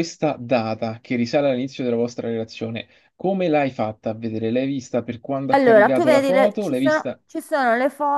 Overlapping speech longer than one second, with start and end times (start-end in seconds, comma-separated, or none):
5.5-7.2